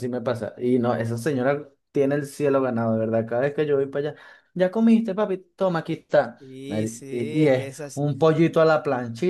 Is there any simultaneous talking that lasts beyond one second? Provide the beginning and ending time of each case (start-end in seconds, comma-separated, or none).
6.4-8.0